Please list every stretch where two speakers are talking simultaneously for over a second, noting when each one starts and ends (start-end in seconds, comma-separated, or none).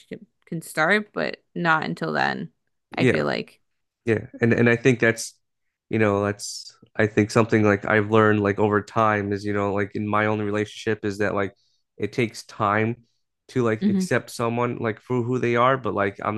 none